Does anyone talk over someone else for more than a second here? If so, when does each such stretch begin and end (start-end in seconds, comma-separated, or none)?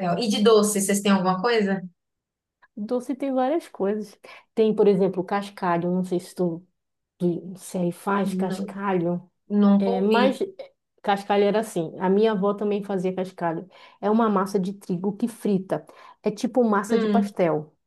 none